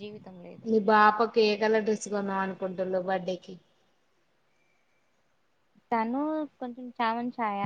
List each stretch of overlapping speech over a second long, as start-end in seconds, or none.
none